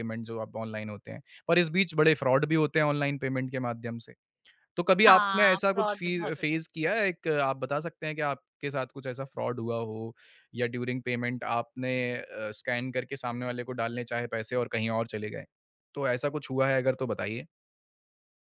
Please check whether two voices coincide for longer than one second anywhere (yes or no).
yes